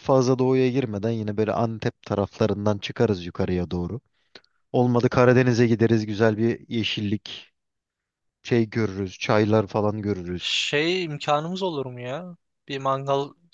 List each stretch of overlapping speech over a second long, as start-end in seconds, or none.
none